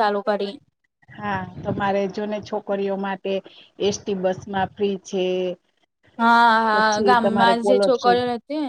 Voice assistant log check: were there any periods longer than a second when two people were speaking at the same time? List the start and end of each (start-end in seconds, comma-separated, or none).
6.7-8.2